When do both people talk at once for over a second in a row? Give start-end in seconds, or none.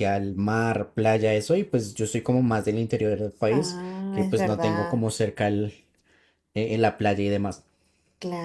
3.5-5.1